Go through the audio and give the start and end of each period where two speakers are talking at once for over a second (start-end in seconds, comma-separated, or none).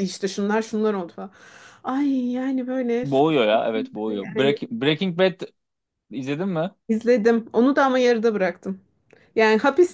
3.0-4.6